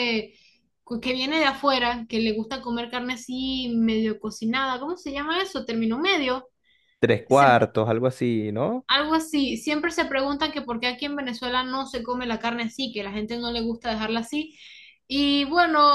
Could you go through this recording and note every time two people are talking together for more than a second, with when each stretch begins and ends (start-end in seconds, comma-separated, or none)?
none